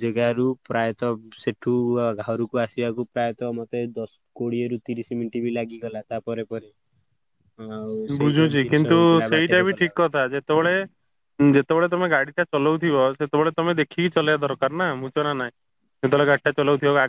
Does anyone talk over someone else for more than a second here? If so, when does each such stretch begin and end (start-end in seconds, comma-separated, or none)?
8.2-10.1